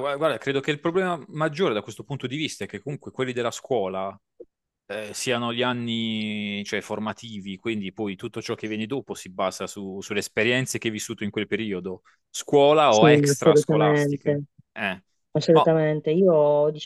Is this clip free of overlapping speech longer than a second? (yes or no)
no